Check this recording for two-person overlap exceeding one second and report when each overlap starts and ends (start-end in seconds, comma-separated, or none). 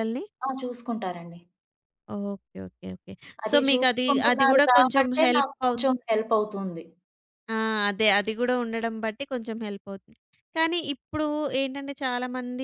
3.5-5.8